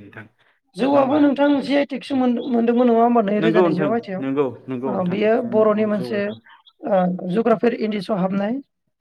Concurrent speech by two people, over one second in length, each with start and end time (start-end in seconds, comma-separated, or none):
3.4-6.4